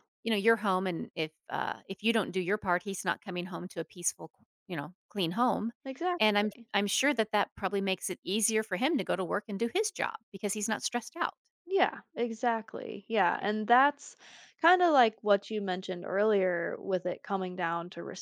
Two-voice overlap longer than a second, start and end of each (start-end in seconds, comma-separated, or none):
none